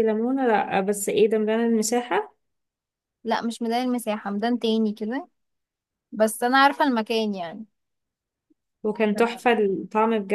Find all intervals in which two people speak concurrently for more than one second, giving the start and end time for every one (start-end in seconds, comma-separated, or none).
none